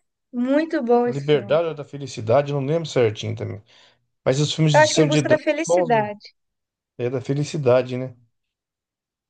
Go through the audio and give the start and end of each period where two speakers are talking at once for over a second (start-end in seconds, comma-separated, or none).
4.7-6.1